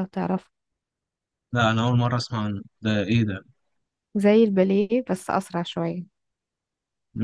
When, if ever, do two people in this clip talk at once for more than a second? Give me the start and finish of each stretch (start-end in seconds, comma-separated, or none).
none